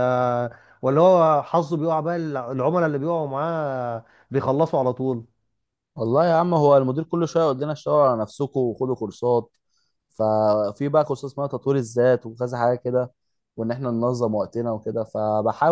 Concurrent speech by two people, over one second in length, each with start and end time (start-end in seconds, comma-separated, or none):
none